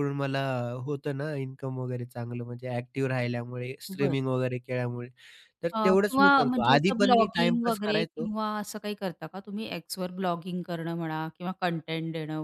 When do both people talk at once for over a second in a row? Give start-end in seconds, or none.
5.7-8.3